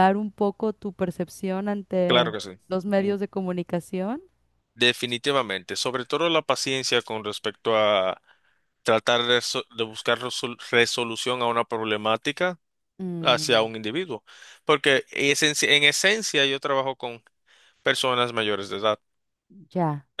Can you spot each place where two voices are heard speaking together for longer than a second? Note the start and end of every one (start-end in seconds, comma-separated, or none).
none